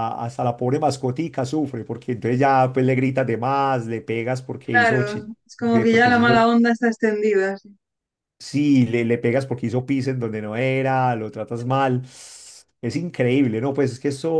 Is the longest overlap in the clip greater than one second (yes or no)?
yes